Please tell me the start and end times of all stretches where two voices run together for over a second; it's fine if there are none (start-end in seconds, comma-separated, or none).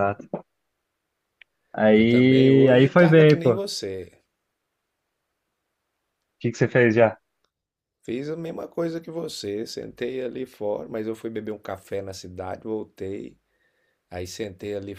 1.9-3.6